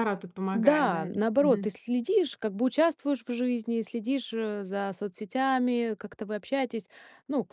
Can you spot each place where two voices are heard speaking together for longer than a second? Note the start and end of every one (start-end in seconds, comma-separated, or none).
0.5-1.8